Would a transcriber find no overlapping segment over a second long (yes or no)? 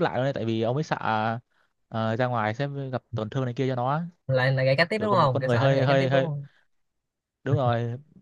no